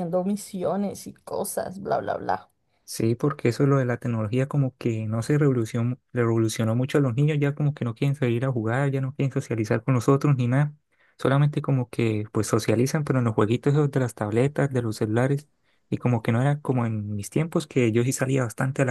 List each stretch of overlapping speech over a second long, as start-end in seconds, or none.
none